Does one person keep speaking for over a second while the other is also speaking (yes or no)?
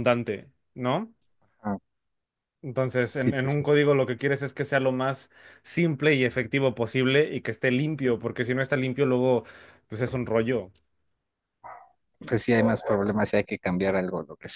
no